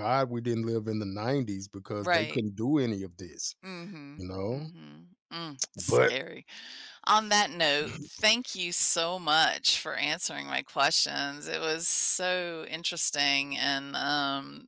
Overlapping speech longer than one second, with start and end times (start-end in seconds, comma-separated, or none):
none